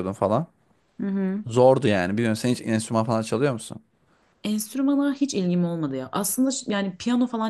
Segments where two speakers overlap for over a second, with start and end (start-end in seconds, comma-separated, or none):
none